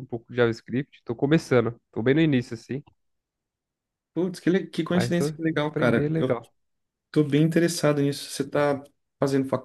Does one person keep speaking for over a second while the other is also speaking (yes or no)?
yes